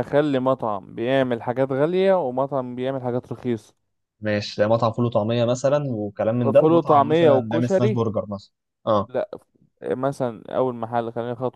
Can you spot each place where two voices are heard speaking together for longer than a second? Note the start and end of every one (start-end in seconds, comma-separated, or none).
6.5-8.0